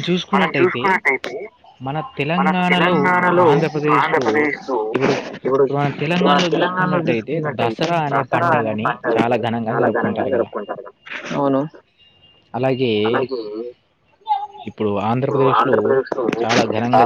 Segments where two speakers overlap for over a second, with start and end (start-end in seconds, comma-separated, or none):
6.3-10.5